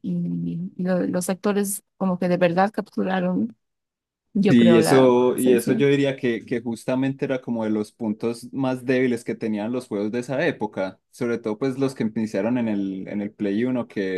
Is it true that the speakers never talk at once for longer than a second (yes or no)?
no